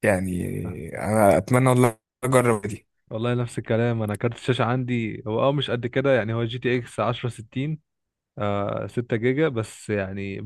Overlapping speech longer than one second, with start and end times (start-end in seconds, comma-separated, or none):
none